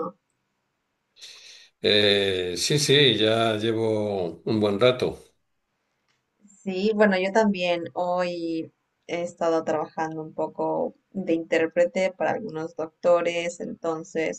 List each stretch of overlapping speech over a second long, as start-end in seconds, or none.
none